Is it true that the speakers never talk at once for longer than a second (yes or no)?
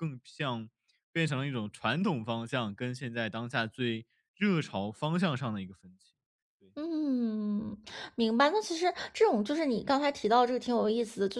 yes